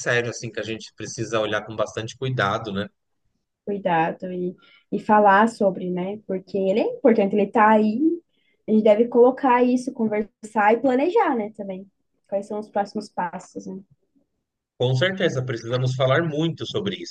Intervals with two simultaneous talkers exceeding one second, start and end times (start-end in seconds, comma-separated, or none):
none